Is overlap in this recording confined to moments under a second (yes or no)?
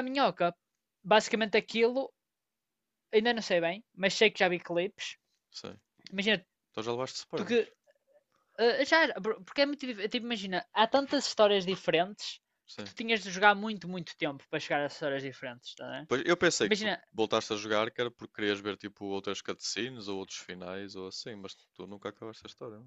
yes